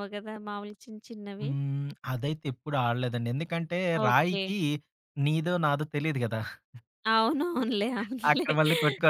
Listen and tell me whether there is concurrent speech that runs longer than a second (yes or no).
no